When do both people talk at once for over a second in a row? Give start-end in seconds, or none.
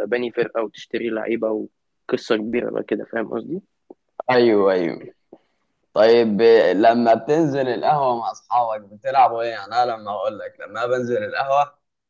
none